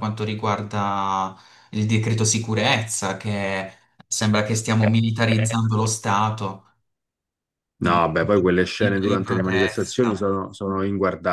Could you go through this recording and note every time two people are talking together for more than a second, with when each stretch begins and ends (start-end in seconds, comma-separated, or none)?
8.8-10.2